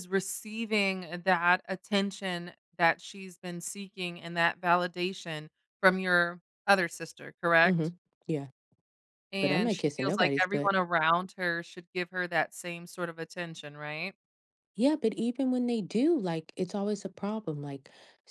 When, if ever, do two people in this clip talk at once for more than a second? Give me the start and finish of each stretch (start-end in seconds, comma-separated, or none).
9.4-10.7